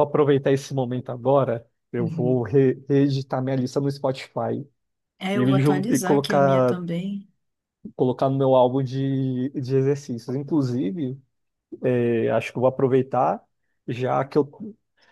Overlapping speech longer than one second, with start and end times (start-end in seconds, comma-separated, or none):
5.3-6.8